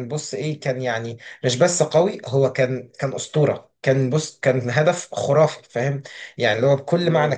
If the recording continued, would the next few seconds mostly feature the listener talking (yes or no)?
no